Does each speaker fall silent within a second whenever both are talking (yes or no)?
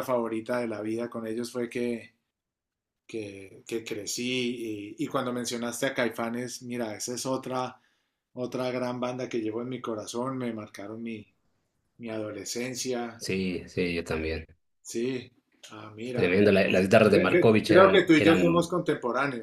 no